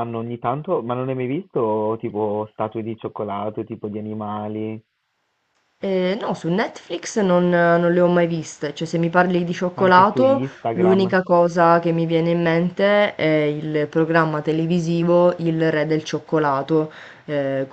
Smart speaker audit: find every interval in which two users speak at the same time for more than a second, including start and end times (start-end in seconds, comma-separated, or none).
9.8-11.2